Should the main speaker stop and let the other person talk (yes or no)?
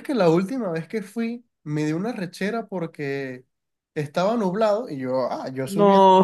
no